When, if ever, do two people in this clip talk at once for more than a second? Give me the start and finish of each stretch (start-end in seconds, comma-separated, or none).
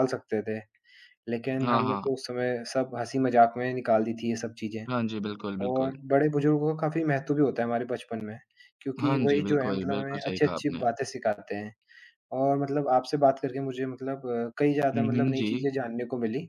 9.0-10.8